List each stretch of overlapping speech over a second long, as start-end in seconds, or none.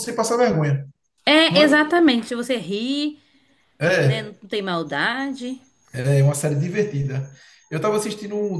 none